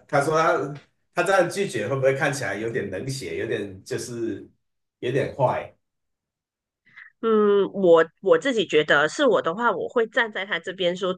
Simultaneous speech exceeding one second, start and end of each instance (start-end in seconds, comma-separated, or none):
none